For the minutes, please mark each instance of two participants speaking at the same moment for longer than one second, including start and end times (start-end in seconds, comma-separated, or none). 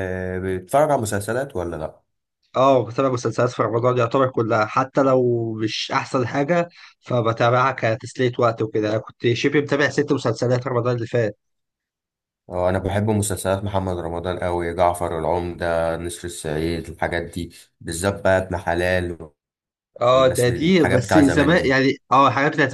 20.1-21.8